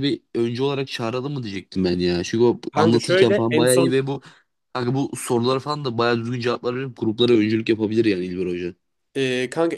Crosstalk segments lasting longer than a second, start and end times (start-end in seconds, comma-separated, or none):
2.7-4.0